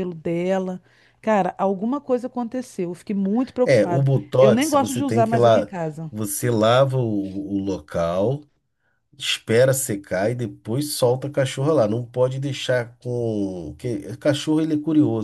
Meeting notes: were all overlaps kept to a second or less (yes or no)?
no